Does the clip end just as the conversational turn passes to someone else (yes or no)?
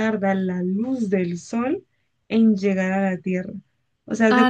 no